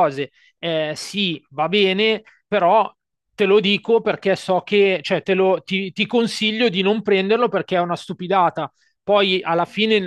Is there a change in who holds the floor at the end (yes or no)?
no